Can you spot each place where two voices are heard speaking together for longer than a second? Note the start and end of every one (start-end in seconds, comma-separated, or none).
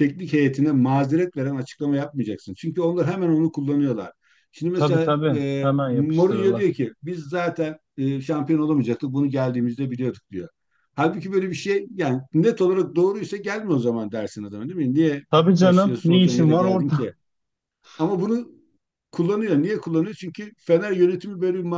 4.7-6.7, 15.6-17.1